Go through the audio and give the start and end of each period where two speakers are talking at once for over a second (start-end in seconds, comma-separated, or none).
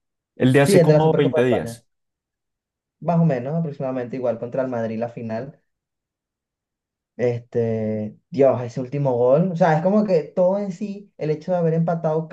0.6-1.8